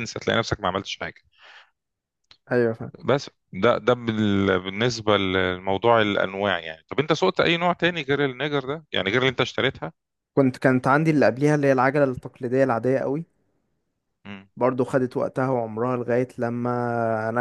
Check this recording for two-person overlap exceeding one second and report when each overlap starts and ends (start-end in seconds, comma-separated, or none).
none